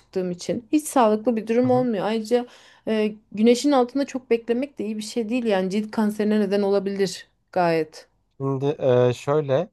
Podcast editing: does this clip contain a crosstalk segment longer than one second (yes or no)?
no